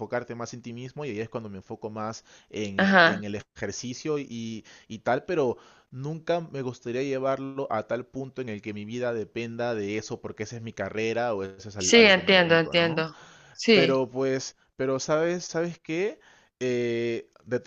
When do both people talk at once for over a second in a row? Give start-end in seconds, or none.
11.8-13.1